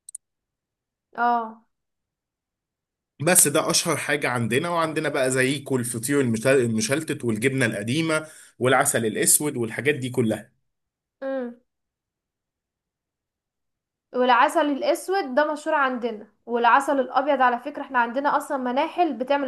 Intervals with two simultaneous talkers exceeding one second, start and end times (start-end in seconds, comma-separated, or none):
none